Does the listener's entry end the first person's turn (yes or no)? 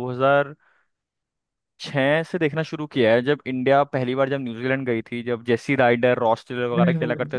yes